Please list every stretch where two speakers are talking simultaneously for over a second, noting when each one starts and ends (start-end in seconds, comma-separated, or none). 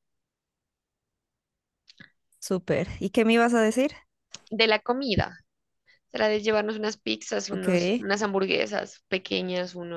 none